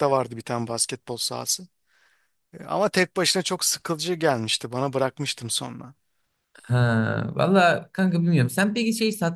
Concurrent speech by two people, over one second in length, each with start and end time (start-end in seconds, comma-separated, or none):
none